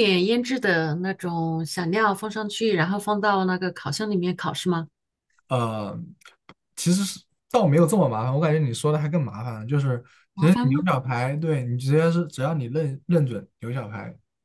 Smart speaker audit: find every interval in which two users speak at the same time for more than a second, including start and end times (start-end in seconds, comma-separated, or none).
none